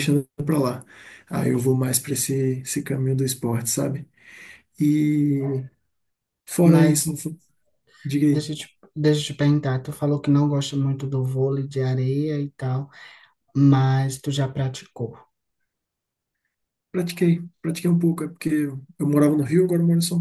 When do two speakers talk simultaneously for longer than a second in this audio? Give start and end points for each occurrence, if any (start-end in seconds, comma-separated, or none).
none